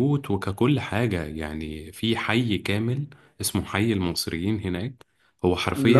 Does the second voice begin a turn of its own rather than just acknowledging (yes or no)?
no